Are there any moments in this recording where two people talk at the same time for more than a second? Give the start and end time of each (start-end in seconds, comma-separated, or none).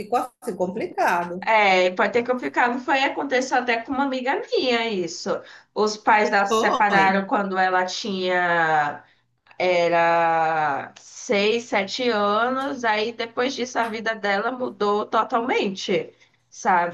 none